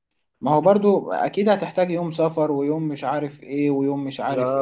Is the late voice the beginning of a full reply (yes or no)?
yes